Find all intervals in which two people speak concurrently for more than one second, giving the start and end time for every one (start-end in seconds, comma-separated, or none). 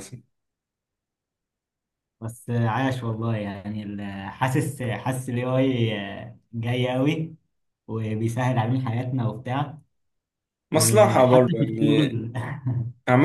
10.7-12.2